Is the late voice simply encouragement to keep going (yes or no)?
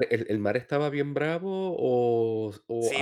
no